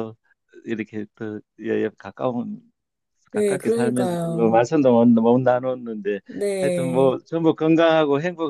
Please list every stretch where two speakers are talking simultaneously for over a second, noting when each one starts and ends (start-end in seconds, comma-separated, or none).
3.3-4.6